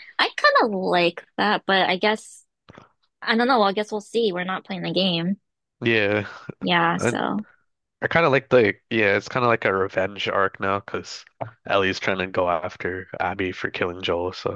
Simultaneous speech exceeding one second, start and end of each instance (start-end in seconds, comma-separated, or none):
none